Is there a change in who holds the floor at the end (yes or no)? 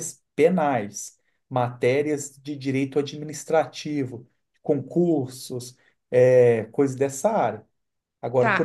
yes